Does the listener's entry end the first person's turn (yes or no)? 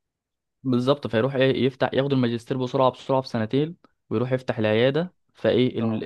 no